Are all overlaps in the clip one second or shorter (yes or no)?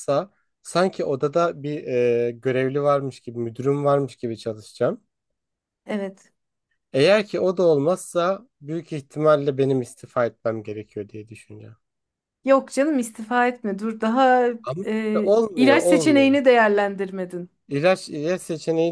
no